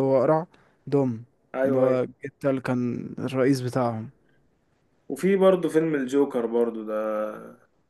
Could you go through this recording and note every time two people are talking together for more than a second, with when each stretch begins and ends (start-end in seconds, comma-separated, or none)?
none